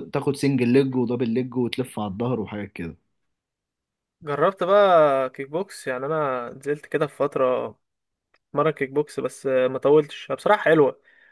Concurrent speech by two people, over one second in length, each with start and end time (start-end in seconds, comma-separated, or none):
none